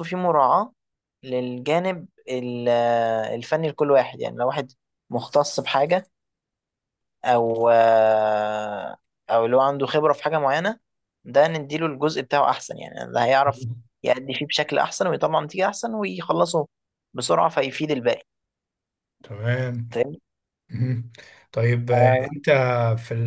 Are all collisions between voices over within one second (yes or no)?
yes